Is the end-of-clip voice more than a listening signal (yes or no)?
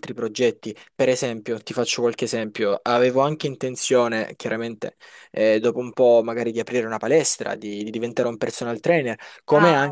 no